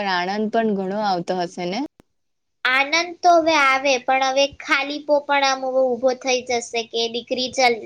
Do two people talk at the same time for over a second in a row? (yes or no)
no